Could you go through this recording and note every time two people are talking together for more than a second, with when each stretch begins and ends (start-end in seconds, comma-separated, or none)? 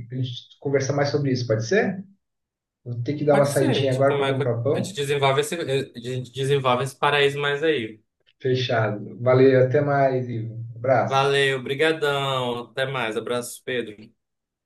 3.3-5.0